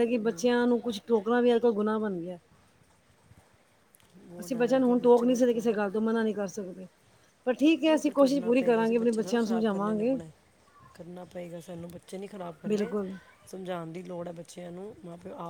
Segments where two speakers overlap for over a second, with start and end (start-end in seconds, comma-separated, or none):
4.4-5.7, 7.9-10.2